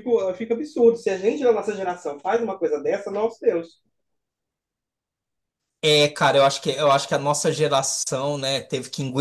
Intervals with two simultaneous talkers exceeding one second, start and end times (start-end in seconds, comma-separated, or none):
none